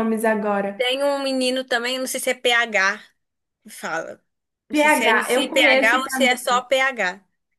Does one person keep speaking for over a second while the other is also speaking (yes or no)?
yes